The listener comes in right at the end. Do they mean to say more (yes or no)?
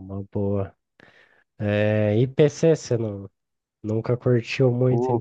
yes